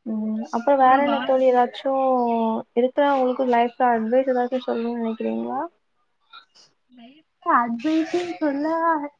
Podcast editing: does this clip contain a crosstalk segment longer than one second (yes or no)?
no